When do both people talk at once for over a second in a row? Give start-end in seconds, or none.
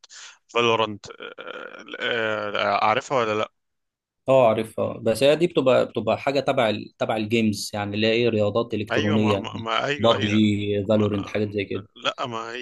8.9-10.4